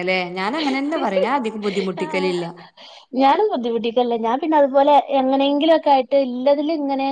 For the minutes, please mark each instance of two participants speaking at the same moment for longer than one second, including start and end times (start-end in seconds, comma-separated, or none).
none